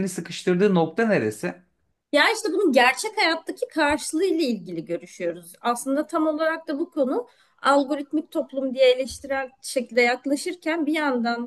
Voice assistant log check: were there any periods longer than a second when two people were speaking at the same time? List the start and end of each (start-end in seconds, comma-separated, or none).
none